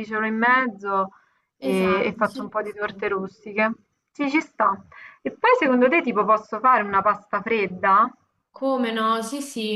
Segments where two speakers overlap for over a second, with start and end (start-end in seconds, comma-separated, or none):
1.6-3.0